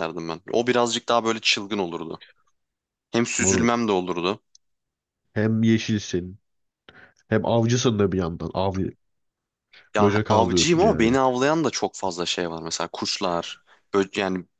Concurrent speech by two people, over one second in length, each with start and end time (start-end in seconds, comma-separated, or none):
10.0-11.2